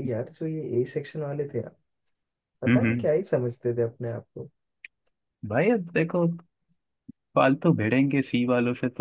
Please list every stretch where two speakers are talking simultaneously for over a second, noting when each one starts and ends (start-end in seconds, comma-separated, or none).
none